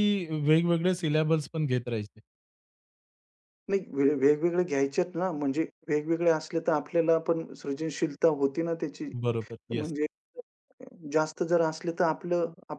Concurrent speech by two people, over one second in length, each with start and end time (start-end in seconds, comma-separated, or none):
none